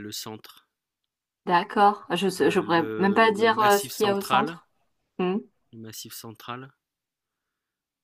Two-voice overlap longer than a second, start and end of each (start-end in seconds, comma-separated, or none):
2.4-4.6